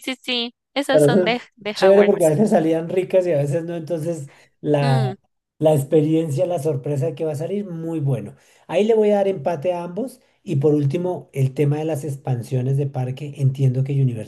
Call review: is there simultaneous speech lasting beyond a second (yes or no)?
yes